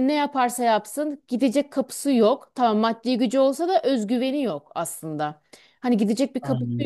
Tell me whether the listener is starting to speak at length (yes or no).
no